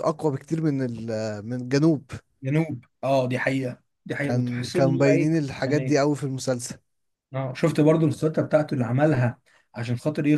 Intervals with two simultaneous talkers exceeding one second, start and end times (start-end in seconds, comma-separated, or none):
4.2-6.0